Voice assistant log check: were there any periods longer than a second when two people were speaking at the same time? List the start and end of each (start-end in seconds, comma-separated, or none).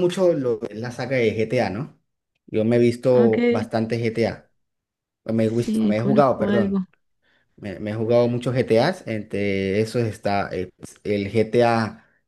5.5-6.8